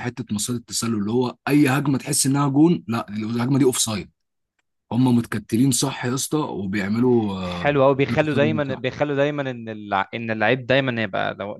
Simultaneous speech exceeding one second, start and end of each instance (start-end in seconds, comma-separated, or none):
7.4-8.8